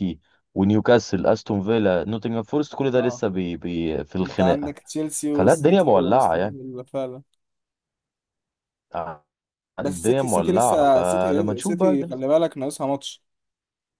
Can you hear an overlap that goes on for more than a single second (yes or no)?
yes